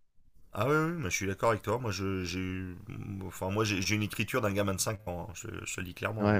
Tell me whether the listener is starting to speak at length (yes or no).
yes